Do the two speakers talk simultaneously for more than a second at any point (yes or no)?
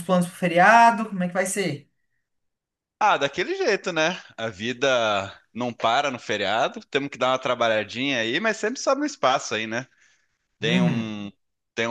no